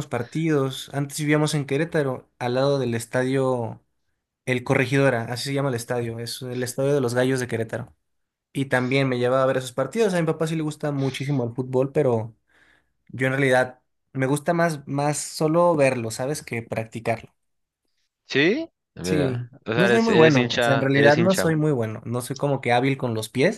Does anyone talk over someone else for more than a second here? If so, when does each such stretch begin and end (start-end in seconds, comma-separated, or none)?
19.0-21.4